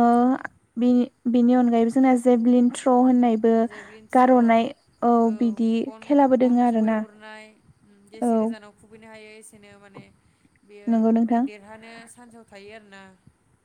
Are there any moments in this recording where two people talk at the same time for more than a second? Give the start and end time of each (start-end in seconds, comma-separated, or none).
none